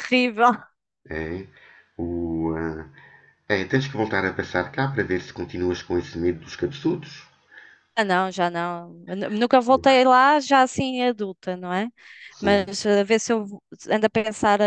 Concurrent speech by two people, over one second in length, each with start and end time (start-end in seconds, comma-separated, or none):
none